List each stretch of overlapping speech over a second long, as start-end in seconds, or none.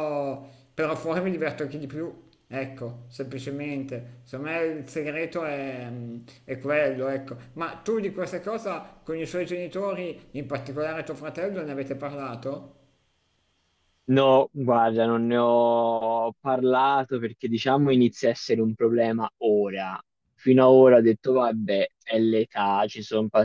none